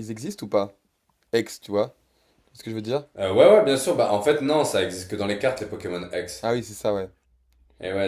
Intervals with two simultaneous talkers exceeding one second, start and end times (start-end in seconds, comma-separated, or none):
none